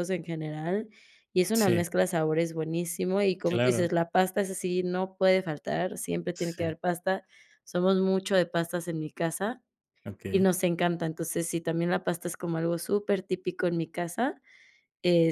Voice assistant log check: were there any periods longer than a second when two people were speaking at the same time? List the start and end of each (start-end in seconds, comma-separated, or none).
none